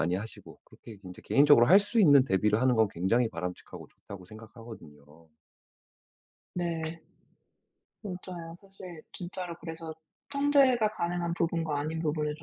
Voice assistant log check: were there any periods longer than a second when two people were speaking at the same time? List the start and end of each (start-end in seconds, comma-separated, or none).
none